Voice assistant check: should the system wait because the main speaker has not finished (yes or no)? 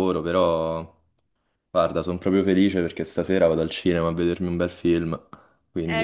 no